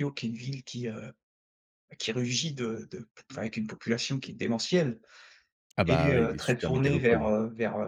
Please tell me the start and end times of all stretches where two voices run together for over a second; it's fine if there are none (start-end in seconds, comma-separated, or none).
5.9-7.3